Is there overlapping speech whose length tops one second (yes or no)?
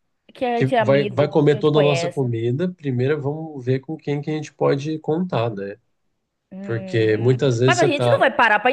yes